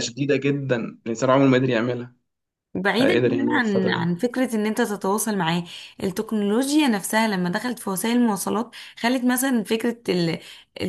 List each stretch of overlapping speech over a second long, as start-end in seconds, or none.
3.0-4.2